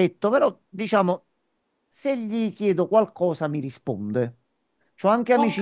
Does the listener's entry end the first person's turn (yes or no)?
no